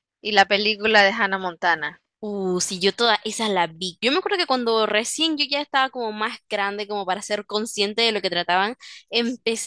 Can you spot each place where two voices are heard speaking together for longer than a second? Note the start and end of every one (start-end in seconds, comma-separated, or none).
none